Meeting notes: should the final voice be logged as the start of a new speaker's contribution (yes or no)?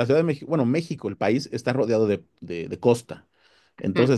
no